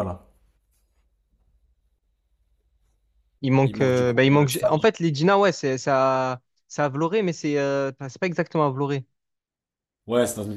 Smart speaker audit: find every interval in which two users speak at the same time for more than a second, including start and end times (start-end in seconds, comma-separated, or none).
3.6-4.9